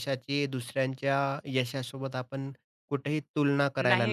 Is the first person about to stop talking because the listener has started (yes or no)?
yes